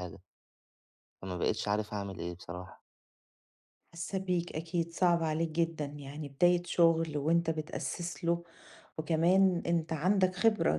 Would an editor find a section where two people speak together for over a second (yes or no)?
no